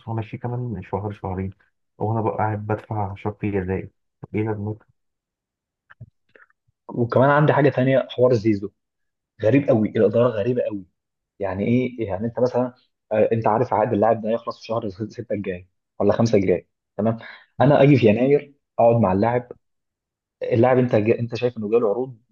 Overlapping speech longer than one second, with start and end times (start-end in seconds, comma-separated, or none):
none